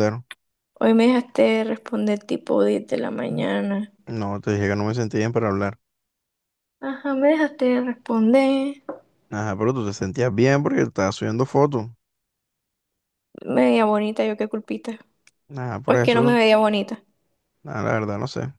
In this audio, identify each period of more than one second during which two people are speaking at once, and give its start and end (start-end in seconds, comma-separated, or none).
none